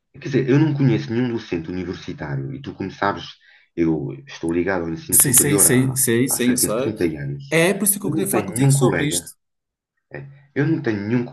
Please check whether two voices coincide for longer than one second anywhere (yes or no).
yes